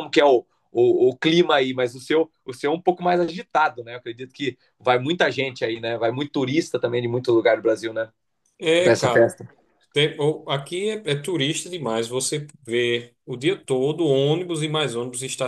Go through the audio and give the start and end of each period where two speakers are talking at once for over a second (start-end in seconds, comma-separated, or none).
none